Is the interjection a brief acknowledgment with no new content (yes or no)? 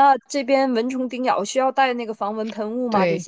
no